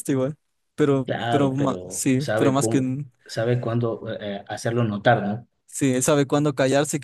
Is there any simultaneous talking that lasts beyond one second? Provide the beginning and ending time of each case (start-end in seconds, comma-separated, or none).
1.1-2.8